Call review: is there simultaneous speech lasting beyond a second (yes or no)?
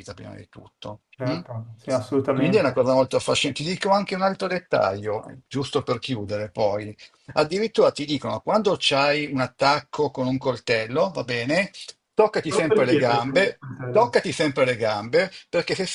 yes